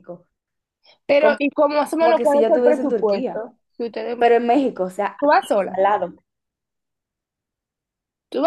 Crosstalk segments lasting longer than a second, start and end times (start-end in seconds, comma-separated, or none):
2.0-3.4